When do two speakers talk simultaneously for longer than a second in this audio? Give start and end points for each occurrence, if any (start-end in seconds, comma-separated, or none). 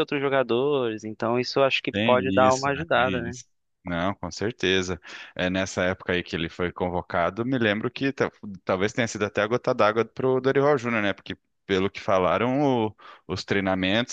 1.9-3.4